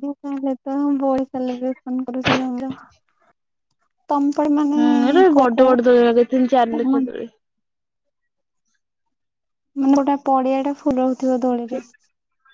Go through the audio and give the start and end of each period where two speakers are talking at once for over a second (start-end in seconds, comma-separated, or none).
5.4-7.2